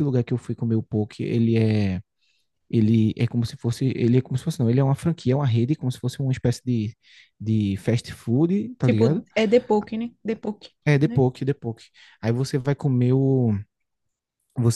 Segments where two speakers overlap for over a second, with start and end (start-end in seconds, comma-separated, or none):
none